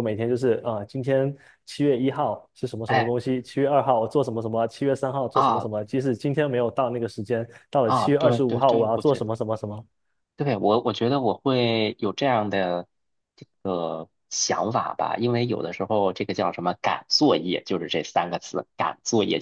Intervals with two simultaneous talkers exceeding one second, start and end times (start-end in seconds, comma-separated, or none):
7.8-9.3